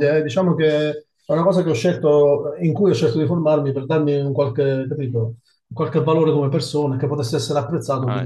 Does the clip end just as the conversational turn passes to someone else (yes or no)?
yes